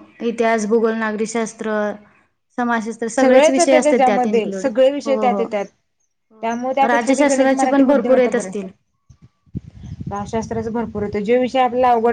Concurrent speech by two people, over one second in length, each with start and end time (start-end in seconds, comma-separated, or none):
6.9-8.7